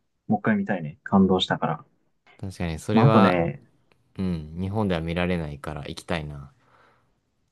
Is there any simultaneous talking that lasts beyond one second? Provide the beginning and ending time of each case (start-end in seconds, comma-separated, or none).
none